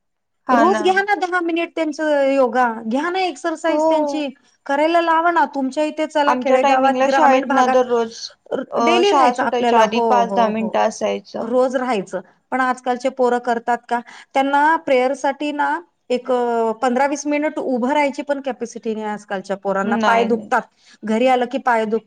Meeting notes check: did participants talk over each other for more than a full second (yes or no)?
yes